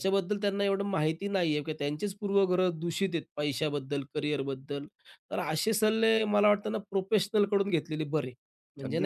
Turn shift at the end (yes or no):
no